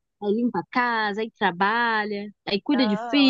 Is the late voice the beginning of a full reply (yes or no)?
yes